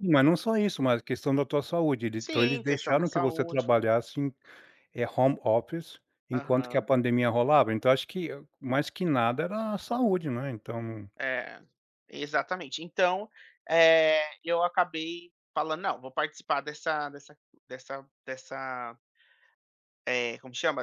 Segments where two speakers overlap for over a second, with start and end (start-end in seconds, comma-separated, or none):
2.1-3.6